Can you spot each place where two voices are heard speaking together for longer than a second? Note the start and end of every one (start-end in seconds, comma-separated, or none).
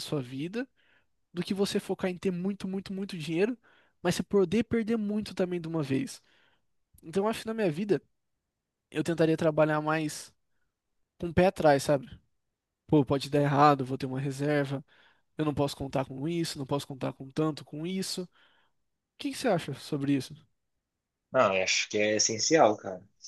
none